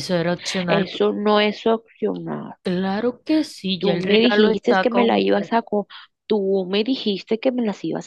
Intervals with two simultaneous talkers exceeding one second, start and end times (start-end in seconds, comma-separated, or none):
3.8-5.5